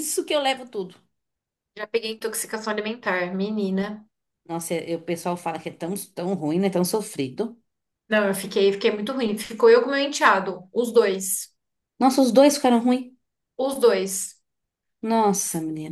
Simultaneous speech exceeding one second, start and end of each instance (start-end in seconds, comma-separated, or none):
none